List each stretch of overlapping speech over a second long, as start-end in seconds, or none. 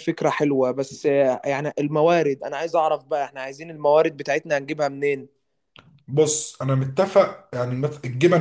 none